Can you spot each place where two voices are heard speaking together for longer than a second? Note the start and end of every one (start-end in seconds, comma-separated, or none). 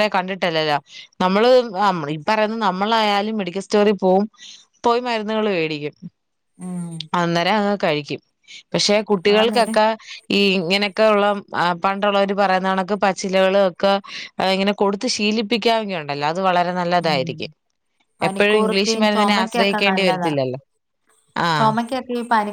18.3-20.3